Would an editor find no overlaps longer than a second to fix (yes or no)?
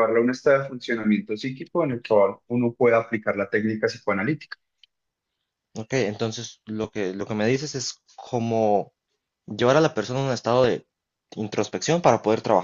yes